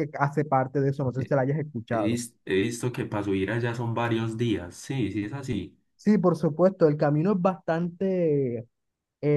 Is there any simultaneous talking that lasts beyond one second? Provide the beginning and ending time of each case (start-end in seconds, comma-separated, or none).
none